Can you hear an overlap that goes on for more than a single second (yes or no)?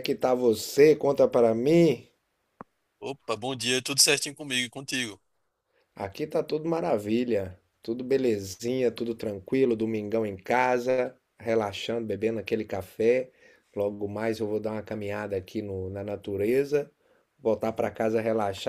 no